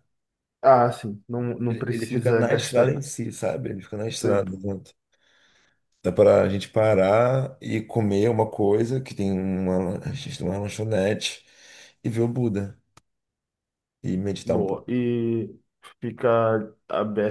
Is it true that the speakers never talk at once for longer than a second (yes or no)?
no